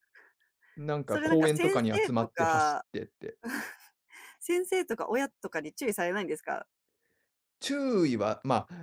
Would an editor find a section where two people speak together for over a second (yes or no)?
yes